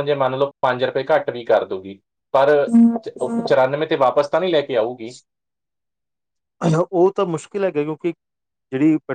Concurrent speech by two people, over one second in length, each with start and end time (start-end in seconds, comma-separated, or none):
none